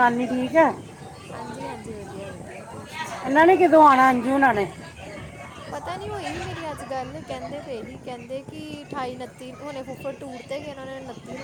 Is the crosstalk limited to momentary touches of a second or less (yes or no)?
yes